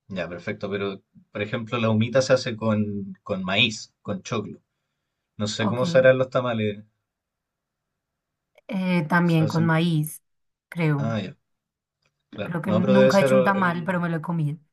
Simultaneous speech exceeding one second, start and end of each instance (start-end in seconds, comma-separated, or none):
12.4-14.1